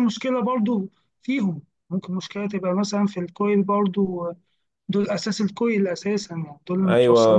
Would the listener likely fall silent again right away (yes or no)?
no